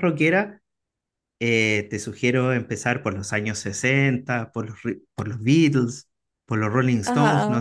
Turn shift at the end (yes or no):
no